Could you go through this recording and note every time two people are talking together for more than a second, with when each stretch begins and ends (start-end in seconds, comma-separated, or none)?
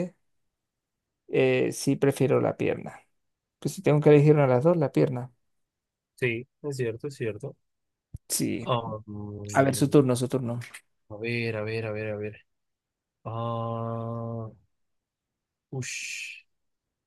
none